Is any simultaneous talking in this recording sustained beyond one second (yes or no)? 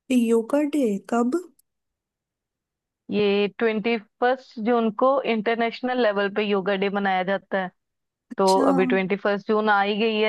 no